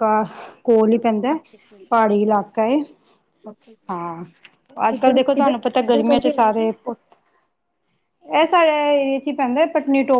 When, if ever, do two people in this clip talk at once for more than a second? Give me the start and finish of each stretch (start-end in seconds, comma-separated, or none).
4.9-6.7